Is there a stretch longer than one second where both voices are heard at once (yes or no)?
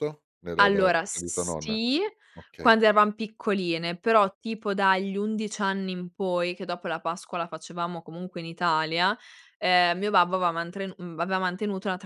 yes